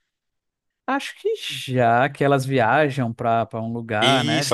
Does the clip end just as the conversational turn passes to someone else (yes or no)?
yes